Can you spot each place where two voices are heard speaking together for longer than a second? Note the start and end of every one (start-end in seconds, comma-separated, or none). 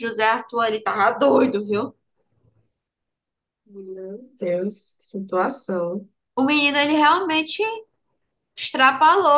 none